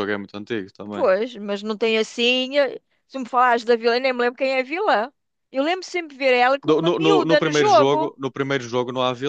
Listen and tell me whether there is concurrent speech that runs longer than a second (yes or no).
yes